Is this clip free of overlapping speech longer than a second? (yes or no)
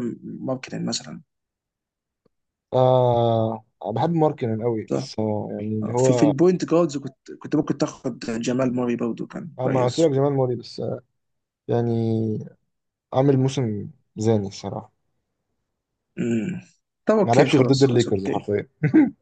no